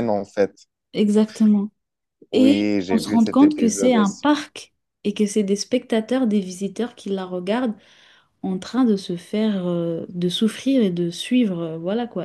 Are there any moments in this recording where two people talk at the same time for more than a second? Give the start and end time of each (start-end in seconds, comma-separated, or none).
2.3-4.2